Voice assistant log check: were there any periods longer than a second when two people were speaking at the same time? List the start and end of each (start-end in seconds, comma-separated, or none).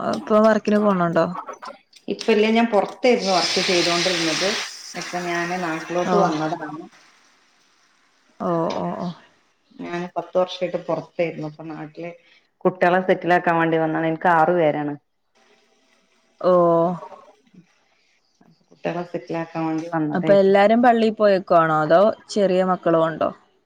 none